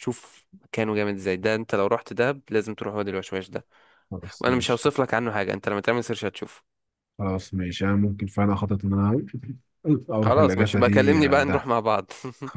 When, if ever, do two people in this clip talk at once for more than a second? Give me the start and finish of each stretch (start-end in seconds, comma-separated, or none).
10.2-11.7